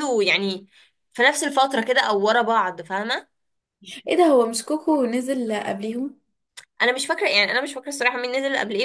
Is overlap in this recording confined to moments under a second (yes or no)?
yes